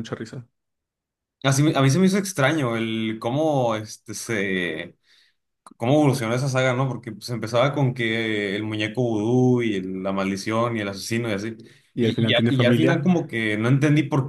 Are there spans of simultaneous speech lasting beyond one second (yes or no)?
yes